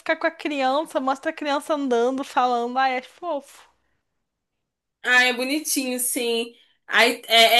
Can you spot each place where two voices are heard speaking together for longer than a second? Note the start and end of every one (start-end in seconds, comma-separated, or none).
none